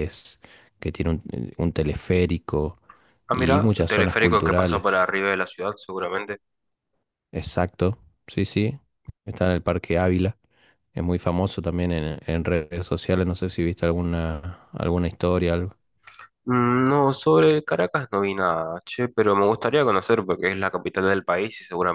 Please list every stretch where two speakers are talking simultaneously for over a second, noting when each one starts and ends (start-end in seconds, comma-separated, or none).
3.3-5.0